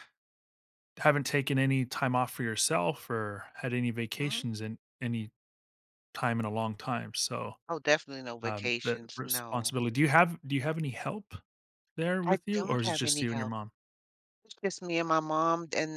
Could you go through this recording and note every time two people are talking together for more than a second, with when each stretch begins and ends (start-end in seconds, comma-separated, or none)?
8.5-9.8, 12.2-13.5